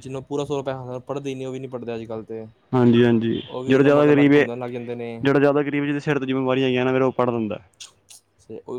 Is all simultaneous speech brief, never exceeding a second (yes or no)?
no